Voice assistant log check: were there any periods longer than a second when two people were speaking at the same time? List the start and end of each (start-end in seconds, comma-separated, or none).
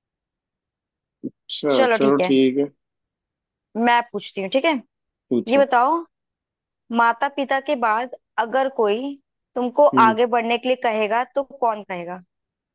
none